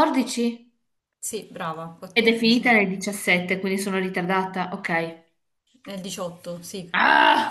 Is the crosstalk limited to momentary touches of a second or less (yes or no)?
yes